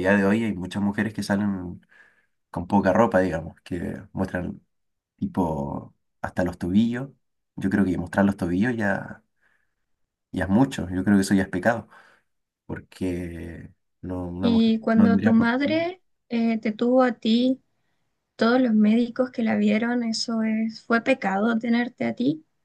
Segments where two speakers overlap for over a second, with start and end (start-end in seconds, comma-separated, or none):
14.4-15.9